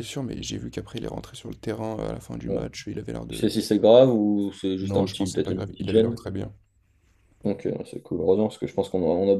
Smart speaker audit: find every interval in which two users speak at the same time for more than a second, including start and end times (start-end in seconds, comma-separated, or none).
4.8-6.2